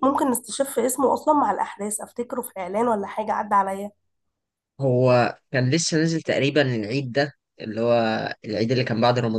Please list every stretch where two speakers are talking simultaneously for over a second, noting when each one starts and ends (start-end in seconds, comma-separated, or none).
none